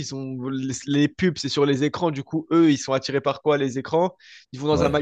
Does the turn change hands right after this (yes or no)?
no